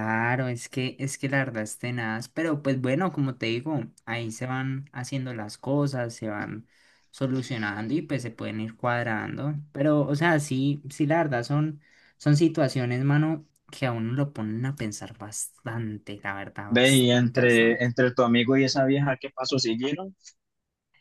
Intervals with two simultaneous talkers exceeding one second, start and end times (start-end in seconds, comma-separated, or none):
16.6-17.9